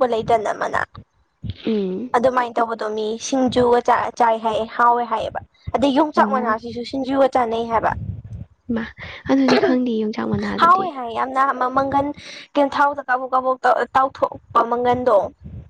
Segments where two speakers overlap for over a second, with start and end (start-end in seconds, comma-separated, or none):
none